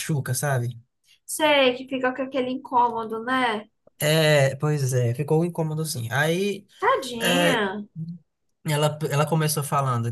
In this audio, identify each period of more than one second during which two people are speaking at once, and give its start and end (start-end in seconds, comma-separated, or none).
none